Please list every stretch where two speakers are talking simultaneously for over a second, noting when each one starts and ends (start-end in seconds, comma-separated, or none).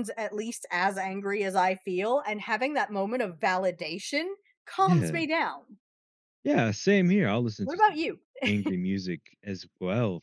none